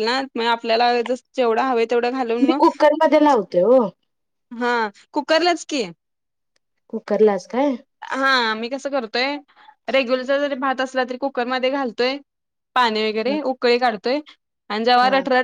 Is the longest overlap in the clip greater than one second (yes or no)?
no